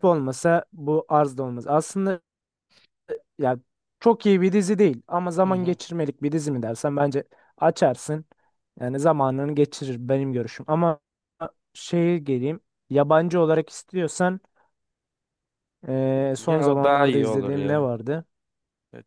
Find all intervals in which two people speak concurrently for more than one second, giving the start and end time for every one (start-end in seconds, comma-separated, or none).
16.4-17.9